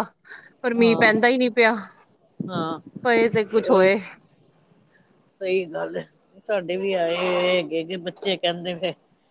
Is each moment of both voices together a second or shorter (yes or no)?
yes